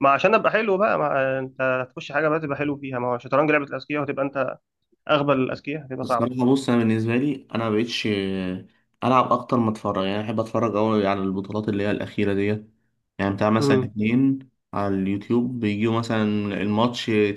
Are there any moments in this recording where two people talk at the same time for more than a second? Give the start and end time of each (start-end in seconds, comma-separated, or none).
none